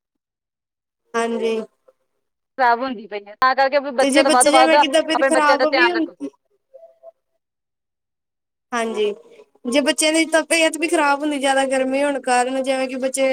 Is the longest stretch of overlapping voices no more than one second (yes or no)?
no